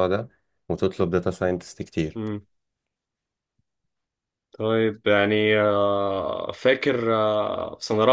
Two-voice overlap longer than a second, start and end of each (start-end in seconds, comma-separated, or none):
none